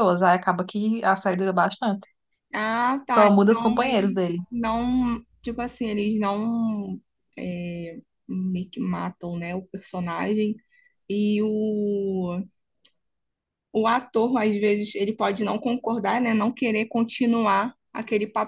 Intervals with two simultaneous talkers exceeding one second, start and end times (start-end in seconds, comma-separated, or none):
3.1-4.4